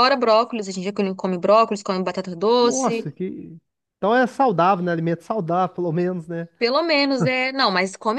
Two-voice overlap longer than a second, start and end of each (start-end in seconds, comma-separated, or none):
none